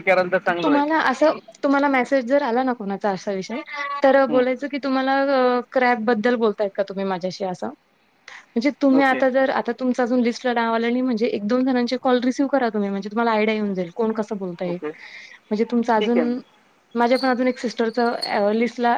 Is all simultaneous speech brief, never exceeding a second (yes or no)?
yes